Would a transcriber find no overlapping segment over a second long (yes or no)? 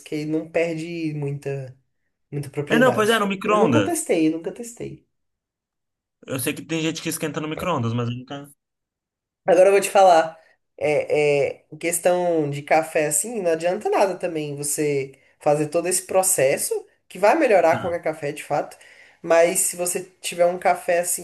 no